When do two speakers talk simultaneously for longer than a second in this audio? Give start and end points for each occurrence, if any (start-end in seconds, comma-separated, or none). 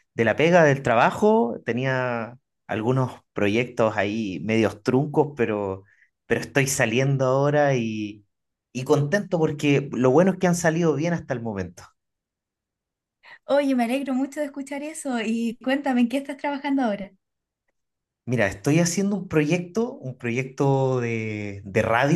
none